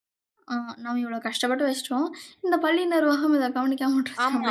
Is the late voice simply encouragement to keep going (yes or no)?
no